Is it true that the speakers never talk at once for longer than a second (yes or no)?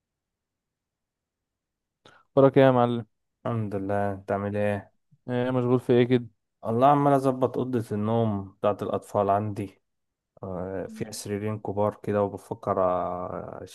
yes